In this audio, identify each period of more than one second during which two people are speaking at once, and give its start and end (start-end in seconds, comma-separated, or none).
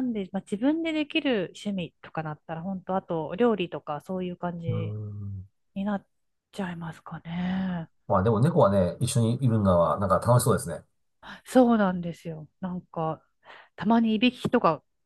none